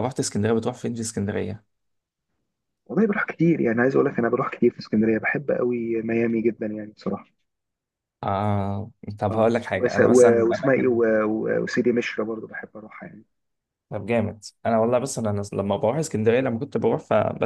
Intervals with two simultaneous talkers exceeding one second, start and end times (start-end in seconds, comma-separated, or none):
9.3-11.0